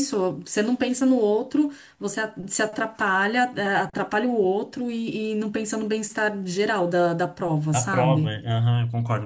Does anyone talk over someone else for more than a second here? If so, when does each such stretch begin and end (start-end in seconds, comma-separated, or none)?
none